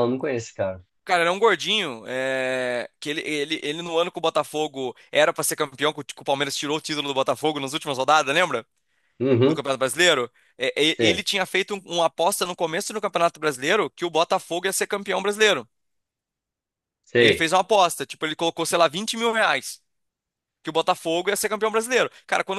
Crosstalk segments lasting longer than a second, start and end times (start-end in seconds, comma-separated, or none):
none